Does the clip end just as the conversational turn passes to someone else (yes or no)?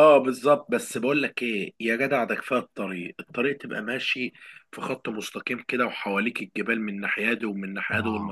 no